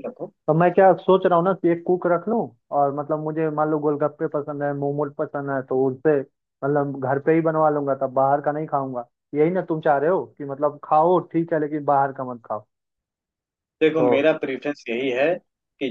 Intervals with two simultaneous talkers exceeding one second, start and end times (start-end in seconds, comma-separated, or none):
none